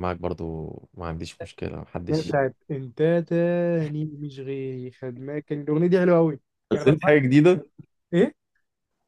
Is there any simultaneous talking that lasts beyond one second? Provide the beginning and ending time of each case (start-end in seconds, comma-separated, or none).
none